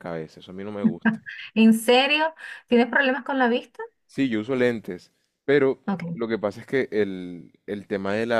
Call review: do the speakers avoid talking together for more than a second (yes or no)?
yes